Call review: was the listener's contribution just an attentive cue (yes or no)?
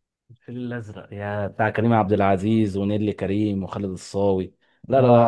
no